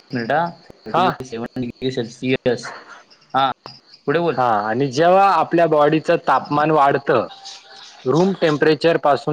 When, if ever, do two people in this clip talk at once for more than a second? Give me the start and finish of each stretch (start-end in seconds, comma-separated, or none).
none